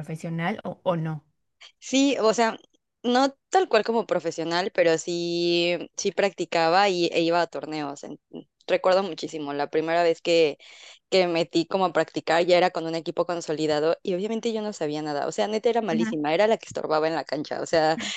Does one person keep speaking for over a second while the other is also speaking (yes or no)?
no